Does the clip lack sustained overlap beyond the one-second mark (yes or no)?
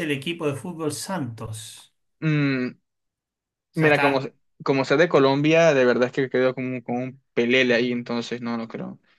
yes